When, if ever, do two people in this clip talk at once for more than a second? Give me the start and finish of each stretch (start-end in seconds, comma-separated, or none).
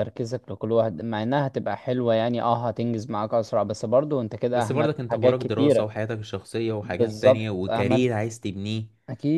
4.5-5.9, 6.8-8.1